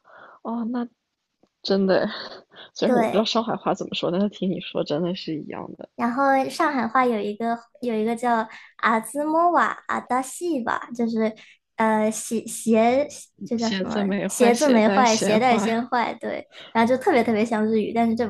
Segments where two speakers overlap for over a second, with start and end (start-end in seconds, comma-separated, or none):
13.6-15.8